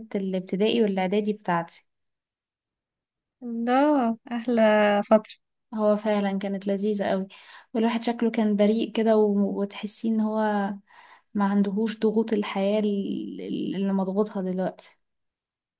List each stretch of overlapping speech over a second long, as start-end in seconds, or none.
none